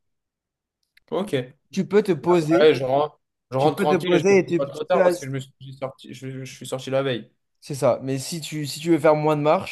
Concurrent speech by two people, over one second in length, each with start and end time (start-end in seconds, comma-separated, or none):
3.6-5.3